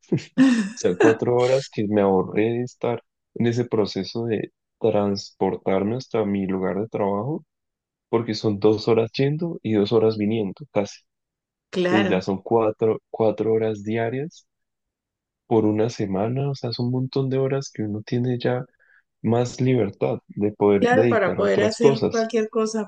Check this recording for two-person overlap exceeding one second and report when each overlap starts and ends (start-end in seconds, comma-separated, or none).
20.8-22.3